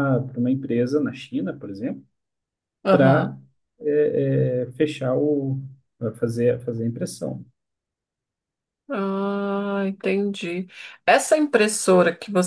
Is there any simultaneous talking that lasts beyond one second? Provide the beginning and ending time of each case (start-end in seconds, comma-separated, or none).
none